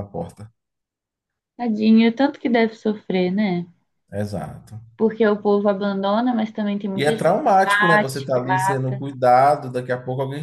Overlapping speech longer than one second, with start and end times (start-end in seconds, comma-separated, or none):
6.9-8.9